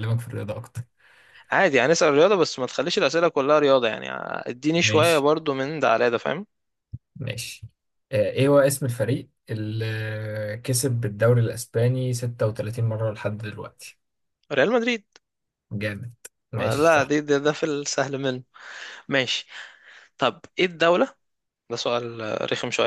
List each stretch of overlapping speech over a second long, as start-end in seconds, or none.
none